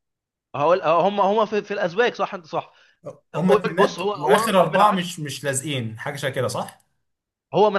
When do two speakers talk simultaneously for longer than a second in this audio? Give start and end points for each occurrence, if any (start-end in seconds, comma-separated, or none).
3.5-5.1